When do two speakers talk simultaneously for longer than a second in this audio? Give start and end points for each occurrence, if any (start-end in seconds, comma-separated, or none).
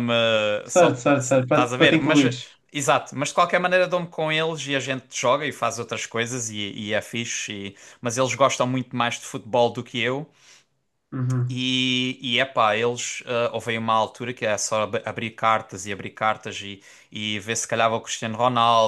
0.7-2.4